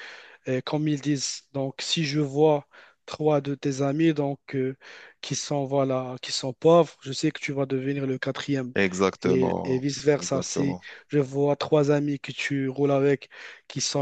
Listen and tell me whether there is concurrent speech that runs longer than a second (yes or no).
yes